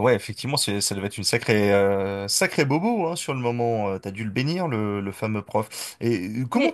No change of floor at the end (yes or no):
yes